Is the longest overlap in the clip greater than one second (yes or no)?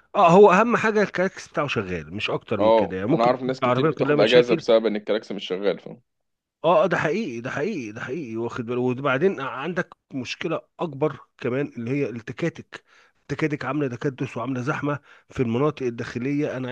yes